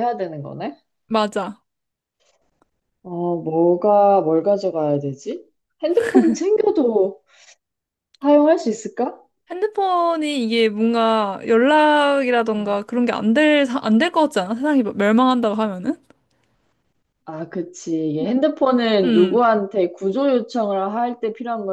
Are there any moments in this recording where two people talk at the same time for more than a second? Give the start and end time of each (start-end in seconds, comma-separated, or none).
none